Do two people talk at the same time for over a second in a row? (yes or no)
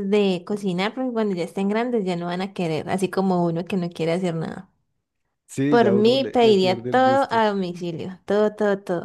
yes